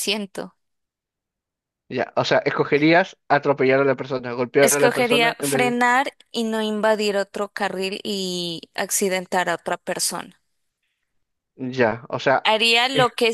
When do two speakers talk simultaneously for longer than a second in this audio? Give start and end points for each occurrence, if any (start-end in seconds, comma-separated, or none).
4.6-5.8